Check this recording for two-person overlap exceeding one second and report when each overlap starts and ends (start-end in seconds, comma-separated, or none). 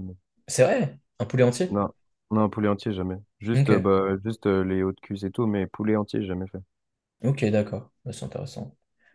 none